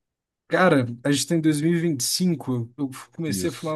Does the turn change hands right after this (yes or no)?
no